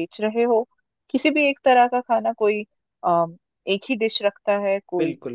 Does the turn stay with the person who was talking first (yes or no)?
no